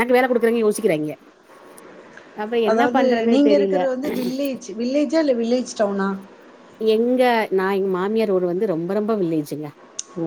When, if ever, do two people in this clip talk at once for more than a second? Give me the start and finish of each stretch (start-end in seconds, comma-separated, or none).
none